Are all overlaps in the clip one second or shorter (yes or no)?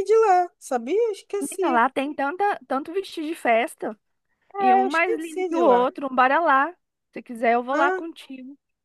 no